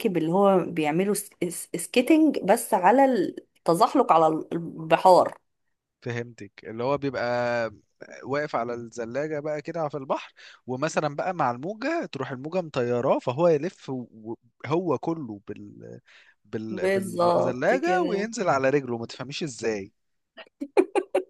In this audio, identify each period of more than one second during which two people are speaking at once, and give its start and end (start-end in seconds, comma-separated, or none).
16.7-18.3